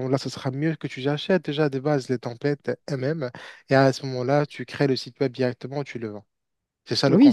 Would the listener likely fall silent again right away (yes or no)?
no